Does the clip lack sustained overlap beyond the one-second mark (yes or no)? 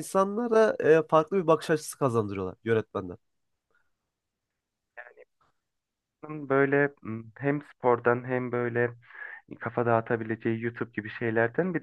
yes